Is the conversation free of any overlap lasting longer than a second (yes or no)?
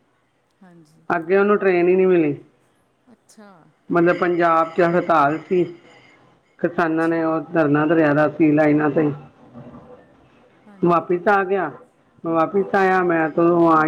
yes